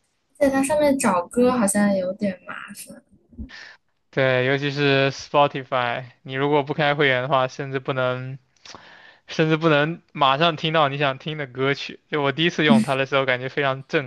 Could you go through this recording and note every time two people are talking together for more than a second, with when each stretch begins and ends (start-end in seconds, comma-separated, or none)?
none